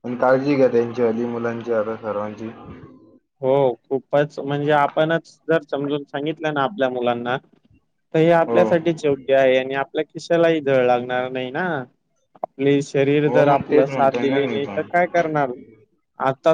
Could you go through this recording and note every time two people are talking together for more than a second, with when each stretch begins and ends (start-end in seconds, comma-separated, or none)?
13.3-14.8